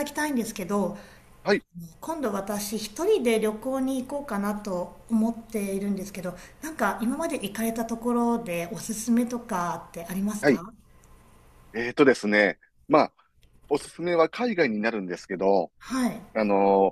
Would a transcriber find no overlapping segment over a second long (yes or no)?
yes